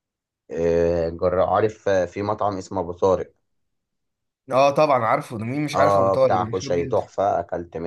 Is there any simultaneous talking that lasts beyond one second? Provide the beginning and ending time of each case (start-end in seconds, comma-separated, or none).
5.7-7.0